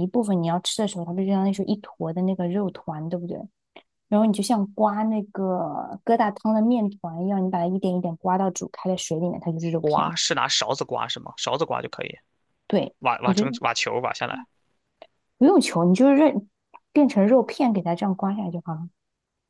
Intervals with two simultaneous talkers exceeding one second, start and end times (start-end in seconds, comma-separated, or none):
none